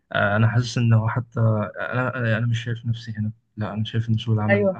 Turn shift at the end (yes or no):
yes